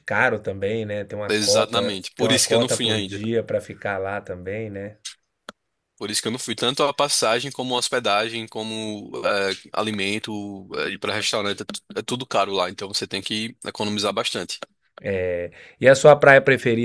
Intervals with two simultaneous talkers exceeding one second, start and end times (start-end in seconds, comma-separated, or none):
1.3-3.2